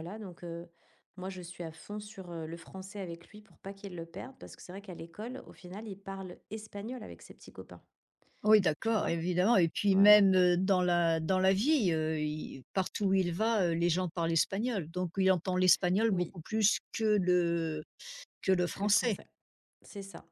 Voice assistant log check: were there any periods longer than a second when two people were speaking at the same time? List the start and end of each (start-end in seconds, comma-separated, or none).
none